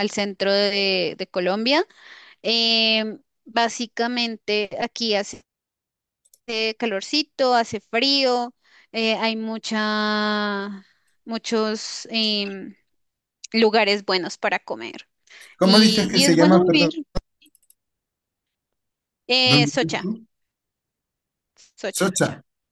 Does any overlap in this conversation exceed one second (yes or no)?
yes